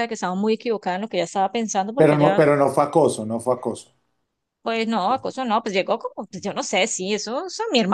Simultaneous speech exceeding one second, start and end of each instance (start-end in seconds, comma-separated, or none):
none